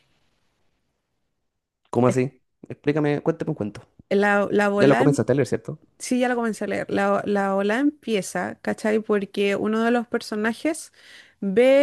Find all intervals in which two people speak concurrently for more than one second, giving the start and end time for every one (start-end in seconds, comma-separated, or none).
none